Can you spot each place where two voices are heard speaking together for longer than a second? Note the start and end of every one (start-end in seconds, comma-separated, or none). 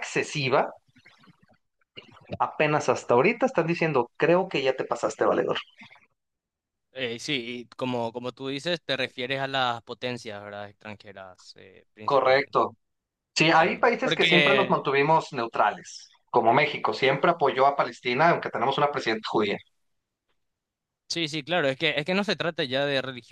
13.5-14.9